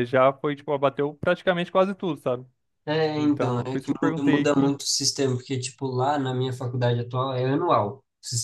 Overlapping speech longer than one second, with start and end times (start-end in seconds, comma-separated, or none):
3.1-4.7